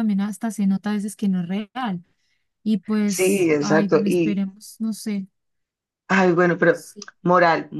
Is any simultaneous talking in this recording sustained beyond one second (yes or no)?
yes